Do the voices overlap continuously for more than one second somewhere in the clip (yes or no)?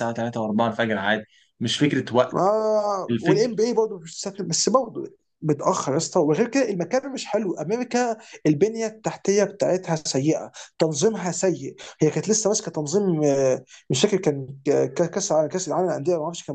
no